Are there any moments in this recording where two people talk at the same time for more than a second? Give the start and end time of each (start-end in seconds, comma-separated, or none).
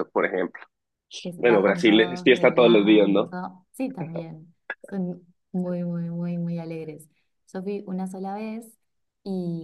1.4-3.3